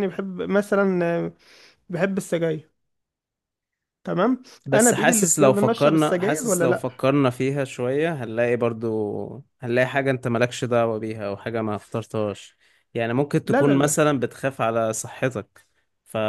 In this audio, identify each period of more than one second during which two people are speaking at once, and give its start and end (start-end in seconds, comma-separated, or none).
4.7-6.8